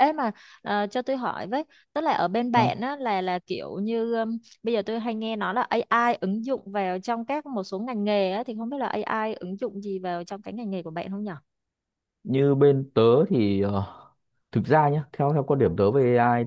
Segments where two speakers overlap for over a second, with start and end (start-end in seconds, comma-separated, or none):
none